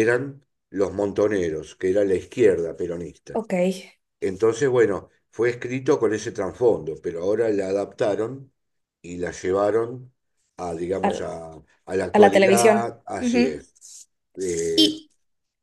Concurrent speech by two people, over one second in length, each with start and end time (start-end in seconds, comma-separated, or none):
12.1-13.7